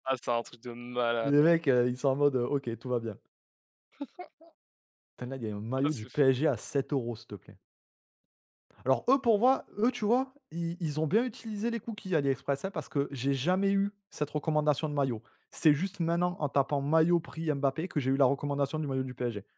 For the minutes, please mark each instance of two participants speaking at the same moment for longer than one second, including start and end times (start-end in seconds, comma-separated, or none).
none